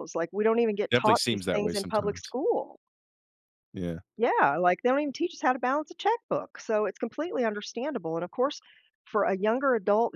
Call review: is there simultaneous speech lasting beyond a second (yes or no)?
yes